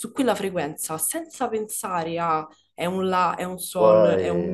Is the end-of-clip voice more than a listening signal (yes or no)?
no